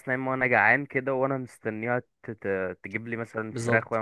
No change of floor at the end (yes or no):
no